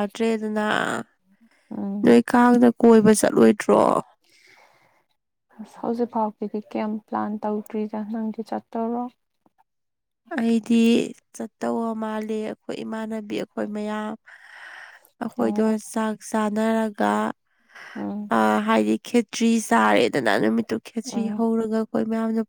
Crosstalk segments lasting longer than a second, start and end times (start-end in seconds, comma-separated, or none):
none